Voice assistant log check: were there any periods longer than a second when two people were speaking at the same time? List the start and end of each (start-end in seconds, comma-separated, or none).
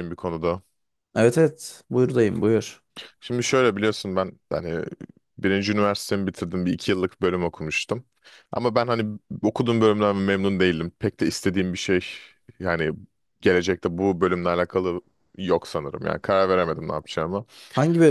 none